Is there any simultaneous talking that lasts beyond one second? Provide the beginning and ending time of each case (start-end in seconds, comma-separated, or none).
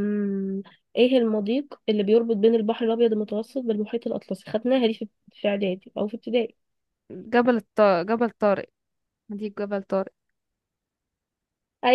none